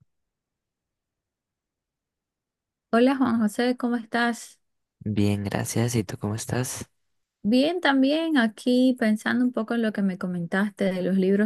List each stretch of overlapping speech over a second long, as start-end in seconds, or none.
none